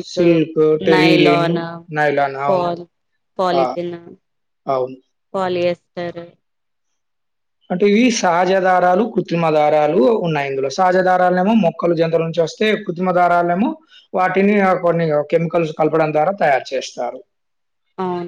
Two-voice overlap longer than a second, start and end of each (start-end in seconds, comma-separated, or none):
none